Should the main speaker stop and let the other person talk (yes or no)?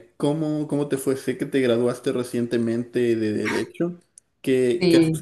no